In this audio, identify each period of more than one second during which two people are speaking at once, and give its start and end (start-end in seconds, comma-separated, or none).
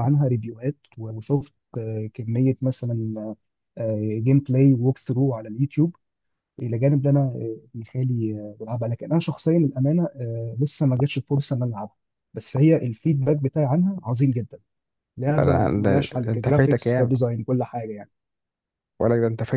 15.4-17.1